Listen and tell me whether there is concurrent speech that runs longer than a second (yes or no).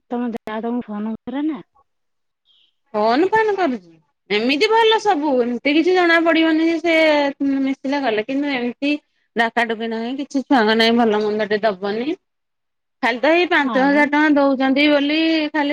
no